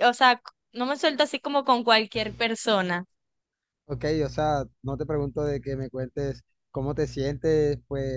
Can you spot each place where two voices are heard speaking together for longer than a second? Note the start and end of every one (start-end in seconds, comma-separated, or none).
none